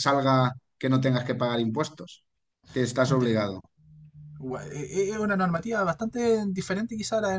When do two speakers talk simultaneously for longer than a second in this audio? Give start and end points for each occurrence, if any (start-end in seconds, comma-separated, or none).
none